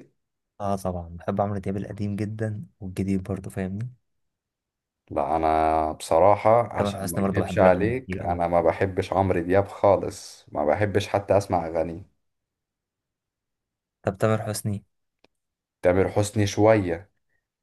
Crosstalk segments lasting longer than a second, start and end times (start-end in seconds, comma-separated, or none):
6.8-8.4